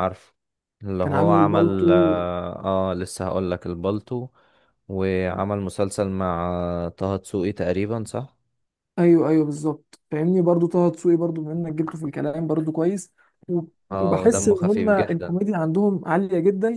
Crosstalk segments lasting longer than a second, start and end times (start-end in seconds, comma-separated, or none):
1.0-2.2, 14.0-15.4